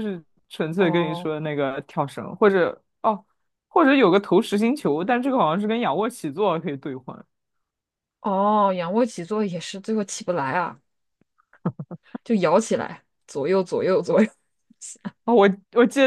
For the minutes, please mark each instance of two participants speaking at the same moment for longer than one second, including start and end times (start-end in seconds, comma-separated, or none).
none